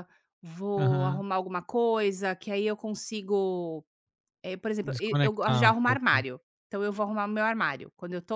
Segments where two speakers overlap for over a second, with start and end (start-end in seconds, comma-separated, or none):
4.8-6.2